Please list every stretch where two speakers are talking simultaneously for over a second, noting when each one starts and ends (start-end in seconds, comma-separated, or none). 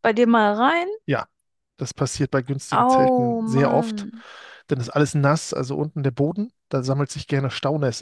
2.7-4.1